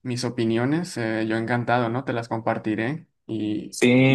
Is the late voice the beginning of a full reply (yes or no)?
yes